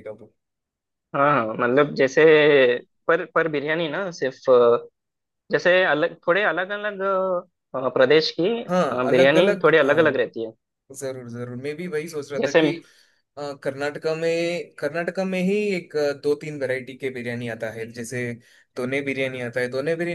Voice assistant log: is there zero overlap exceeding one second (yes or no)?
no